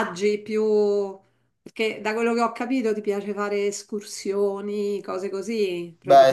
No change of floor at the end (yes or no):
no